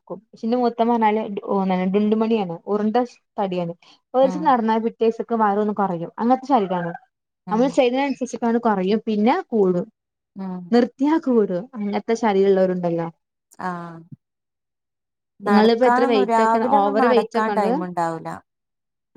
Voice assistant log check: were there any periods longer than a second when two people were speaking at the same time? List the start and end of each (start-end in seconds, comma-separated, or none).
15.5-17.7